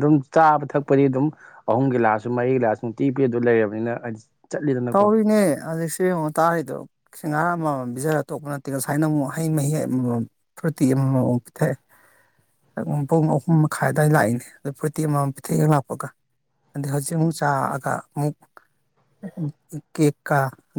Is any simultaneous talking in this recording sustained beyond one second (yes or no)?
no